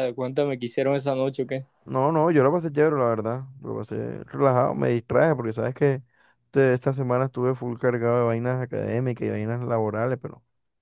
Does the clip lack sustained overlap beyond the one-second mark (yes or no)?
yes